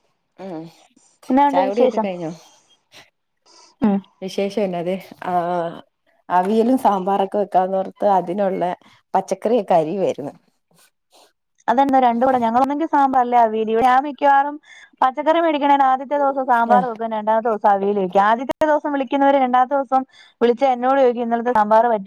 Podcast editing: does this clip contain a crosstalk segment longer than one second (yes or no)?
no